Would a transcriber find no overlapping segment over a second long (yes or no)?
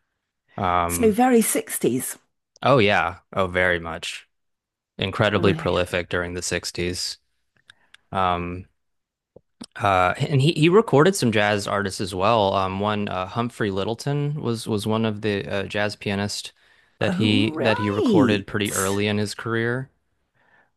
no